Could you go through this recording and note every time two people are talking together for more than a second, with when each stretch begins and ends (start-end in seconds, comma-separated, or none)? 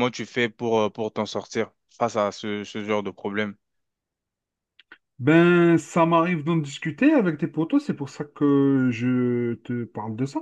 none